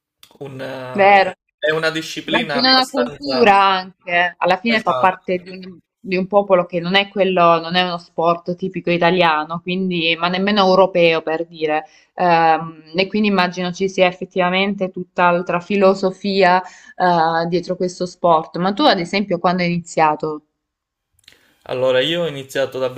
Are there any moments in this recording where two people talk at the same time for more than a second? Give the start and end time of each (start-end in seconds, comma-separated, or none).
2.2-3.6